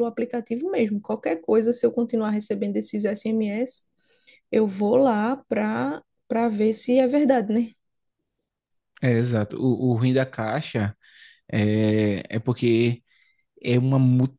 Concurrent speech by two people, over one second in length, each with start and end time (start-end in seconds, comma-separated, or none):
none